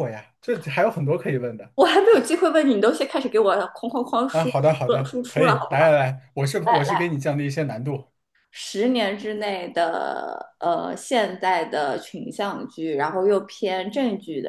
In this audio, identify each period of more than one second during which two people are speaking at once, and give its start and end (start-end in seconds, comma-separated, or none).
4.3-5.9